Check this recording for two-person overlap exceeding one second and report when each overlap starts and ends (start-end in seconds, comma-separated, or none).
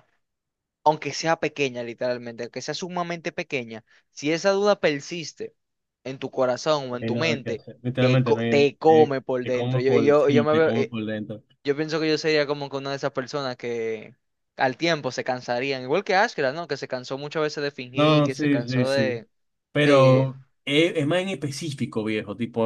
6.9-11.0, 17.9-19.2